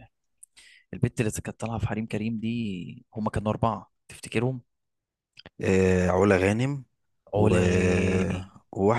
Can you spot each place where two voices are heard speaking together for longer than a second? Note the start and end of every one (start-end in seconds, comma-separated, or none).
none